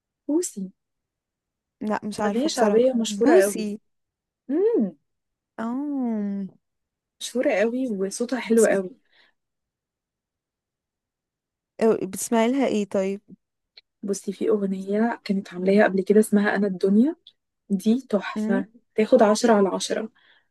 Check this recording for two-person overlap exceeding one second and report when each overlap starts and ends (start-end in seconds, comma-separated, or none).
2.2-3.7